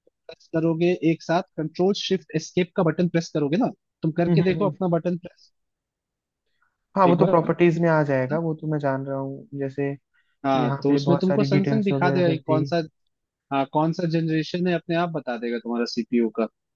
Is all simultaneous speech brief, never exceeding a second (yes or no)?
no